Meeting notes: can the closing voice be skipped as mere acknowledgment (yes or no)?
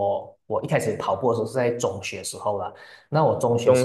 yes